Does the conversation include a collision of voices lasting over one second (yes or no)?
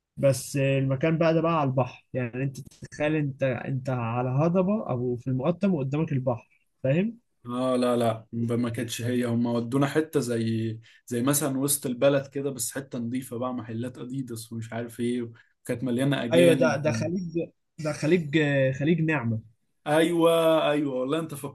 no